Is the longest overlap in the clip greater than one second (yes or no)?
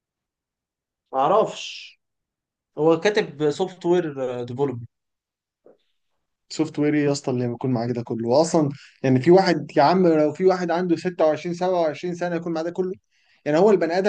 no